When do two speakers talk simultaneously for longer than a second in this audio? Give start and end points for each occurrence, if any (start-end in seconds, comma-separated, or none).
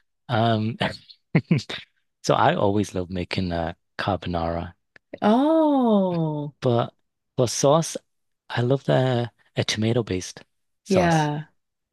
none